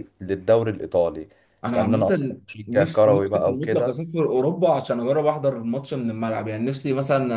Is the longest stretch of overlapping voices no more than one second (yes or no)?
no